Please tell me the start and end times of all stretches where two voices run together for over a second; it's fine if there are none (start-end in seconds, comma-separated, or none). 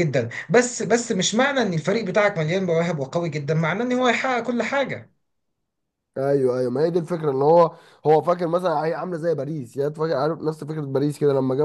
none